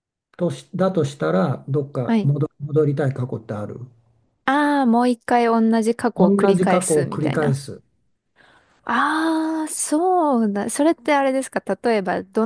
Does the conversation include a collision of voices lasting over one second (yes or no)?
yes